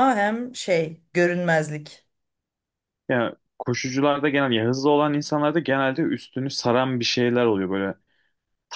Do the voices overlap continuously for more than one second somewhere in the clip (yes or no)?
no